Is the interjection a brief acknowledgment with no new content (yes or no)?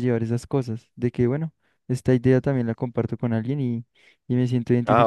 no